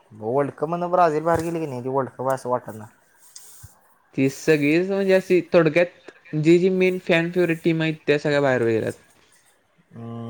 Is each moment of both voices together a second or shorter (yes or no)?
yes